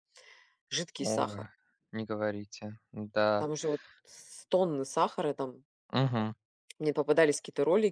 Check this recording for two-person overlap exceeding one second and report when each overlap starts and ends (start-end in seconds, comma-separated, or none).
none